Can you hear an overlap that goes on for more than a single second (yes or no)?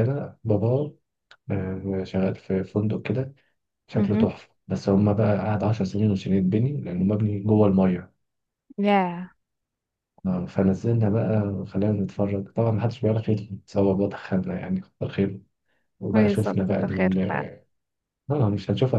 yes